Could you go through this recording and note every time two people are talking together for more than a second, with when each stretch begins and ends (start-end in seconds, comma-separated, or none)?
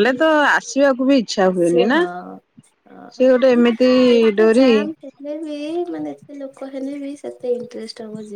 none